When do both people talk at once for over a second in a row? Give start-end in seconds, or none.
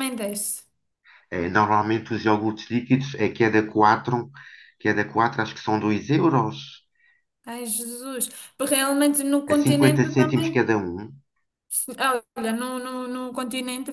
9.5-10.7